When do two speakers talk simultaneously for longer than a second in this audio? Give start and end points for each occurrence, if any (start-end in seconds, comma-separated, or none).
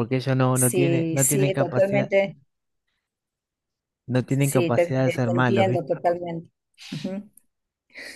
0.5-2.1, 4.3-5.9